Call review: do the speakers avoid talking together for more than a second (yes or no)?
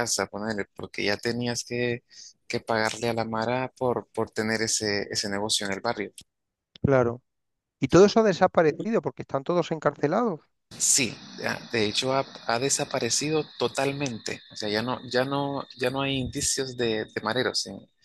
yes